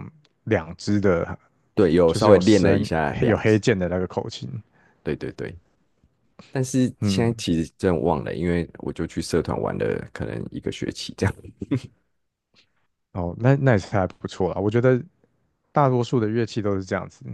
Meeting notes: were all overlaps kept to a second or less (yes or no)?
no